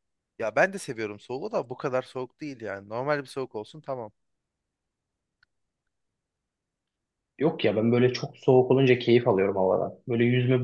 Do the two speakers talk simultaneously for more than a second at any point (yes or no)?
no